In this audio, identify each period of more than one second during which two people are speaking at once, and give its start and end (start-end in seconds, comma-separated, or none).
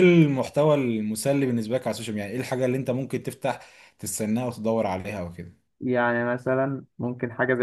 none